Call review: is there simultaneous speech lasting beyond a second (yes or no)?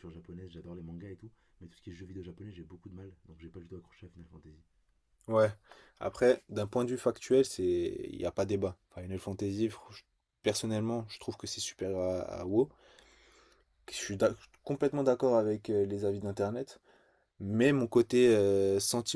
no